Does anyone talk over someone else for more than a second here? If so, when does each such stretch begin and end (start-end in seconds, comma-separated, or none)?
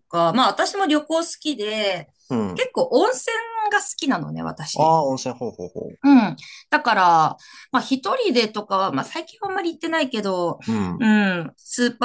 none